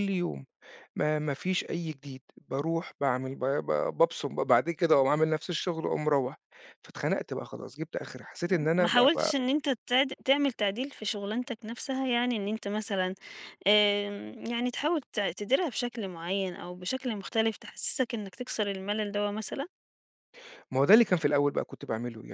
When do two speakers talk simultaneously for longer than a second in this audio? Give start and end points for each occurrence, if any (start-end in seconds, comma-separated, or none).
none